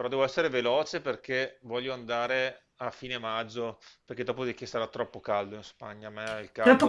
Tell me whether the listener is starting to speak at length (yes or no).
yes